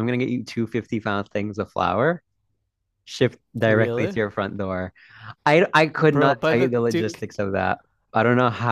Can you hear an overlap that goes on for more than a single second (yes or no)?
yes